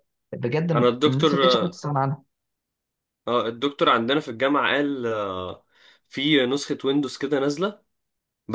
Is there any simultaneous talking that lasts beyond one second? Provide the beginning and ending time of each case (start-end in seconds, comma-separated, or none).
none